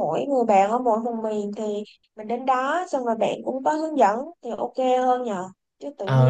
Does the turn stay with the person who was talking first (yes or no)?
yes